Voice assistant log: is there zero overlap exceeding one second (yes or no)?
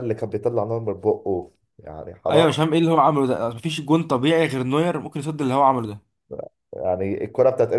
yes